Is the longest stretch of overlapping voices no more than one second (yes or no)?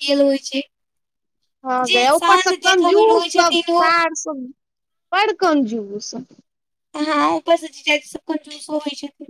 no